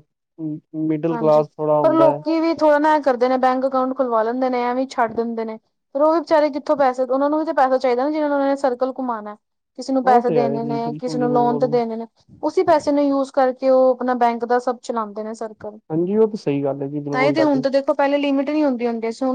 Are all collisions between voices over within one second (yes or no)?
no